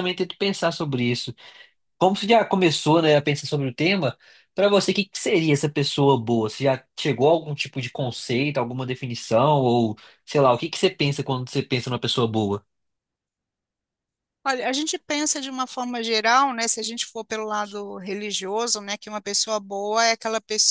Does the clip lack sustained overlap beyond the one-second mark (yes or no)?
yes